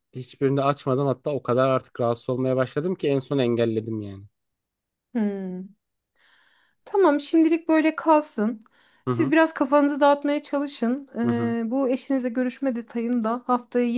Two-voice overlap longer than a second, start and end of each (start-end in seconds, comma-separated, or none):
none